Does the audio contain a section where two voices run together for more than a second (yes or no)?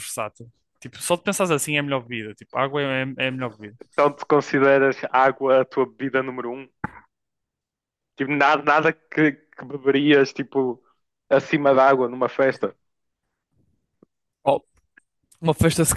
no